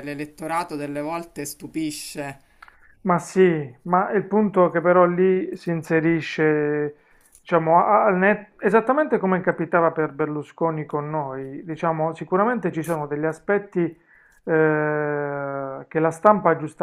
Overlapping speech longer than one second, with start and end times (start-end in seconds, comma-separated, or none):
none